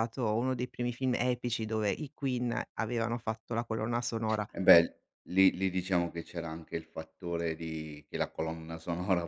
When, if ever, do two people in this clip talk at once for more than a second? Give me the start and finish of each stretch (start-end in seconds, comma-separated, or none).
none